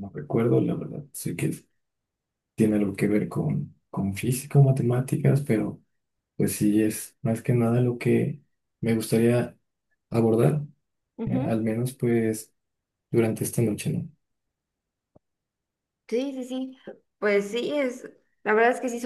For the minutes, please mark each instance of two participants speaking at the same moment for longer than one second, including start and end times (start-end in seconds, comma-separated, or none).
none